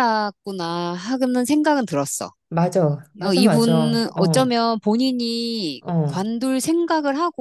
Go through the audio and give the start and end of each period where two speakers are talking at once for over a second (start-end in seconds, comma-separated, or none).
3.2-4.5